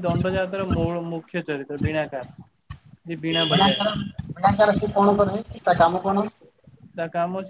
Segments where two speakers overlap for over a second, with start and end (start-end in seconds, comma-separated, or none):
none